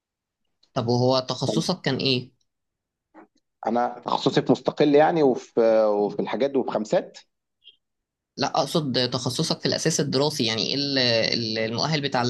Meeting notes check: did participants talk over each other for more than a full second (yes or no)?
no